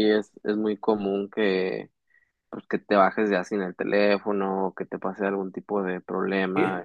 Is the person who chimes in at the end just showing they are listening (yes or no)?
no